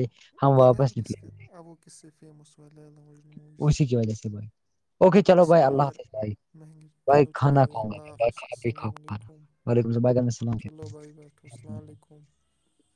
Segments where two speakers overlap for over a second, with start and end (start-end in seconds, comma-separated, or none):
7.1-9.3